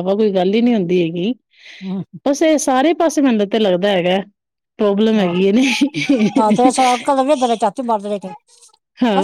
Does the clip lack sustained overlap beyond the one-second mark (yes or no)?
no